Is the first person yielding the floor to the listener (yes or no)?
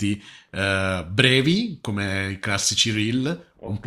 no